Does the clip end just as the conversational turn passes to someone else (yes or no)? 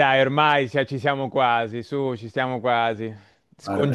no